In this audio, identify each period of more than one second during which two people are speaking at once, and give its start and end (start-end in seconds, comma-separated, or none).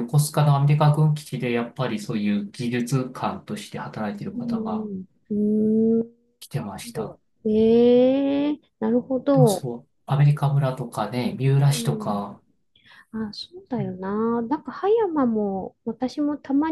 none